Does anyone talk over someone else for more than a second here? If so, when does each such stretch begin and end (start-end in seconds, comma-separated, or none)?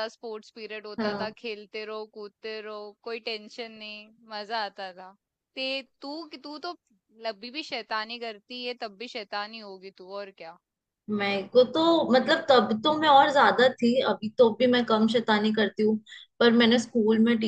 none